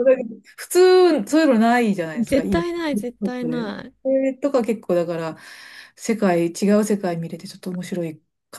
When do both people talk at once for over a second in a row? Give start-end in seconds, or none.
2.2-3.9